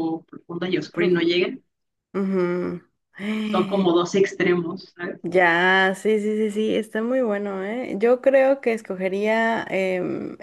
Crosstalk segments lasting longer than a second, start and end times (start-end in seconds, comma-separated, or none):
none